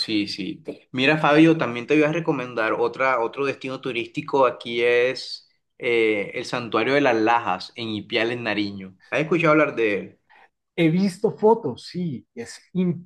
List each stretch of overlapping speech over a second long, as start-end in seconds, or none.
none